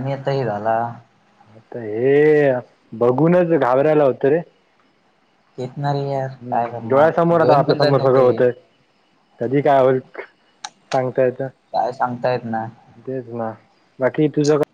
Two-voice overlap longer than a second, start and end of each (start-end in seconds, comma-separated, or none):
6.4-8.4